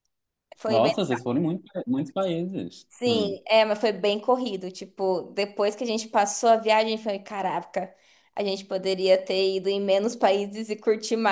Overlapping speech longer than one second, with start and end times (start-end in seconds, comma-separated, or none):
none